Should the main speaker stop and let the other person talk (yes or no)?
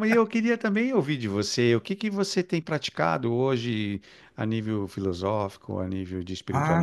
yes